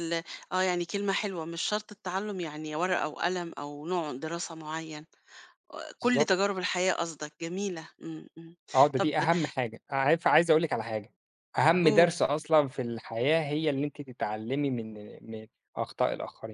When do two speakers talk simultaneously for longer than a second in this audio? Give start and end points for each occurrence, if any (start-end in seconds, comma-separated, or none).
none